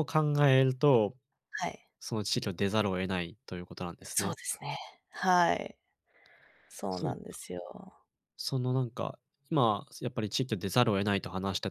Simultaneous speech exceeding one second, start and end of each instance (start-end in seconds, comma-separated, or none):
none